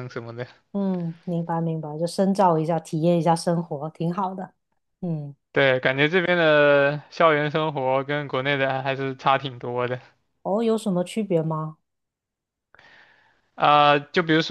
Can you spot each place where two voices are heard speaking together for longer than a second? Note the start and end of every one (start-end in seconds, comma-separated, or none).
none